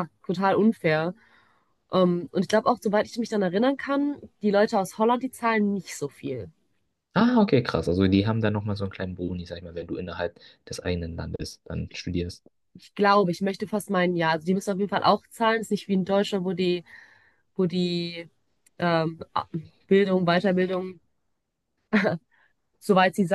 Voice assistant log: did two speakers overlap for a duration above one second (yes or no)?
no